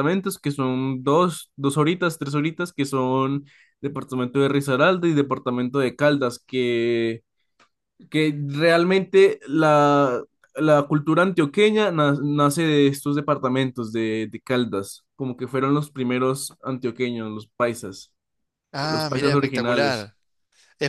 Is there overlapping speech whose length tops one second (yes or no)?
yes